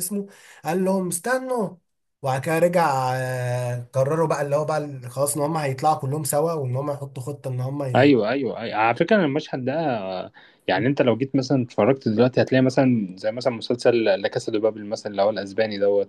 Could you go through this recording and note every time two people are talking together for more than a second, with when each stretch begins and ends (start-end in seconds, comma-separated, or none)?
none